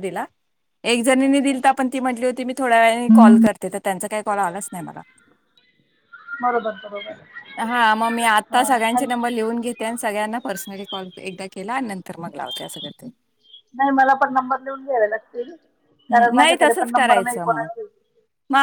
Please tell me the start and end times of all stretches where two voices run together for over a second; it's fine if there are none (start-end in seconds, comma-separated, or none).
16.1-17.7